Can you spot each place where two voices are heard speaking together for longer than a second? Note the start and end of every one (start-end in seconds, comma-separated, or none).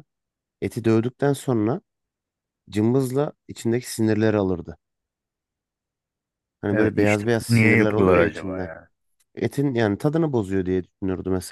6.7-8.7